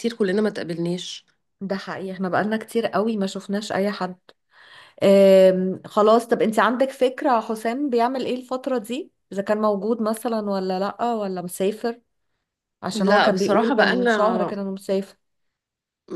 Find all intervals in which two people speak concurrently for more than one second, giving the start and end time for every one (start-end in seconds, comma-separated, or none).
12.9-14.5